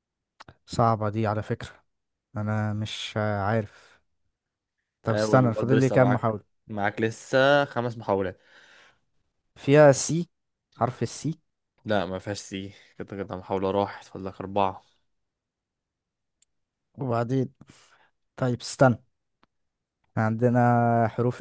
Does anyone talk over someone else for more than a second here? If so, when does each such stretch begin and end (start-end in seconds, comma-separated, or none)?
5.0-6.4